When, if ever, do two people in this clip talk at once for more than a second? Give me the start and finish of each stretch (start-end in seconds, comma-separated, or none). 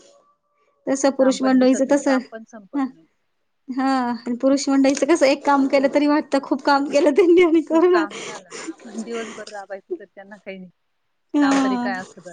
1.2-2.8